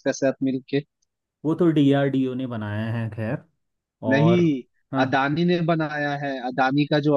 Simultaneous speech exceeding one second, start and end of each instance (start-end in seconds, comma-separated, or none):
none